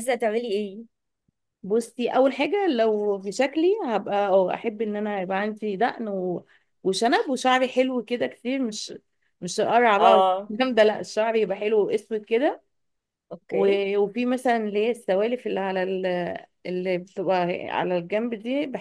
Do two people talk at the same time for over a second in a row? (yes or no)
no